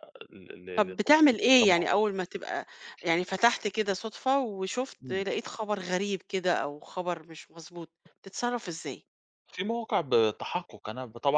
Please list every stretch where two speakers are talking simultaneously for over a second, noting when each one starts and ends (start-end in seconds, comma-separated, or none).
0.8-2.0